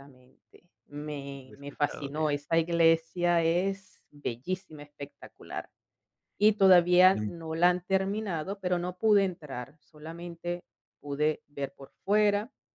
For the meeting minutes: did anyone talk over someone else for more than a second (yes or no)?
yes